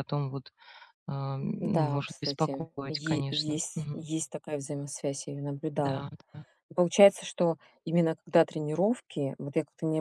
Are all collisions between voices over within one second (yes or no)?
no